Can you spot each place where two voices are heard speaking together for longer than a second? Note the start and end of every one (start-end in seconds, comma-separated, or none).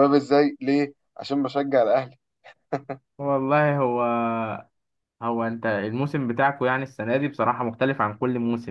none